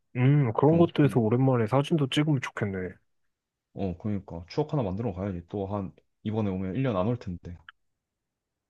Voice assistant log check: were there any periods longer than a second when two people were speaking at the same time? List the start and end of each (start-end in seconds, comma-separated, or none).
none